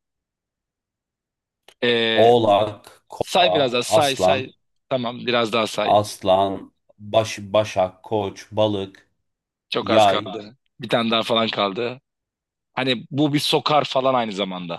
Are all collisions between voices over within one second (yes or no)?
no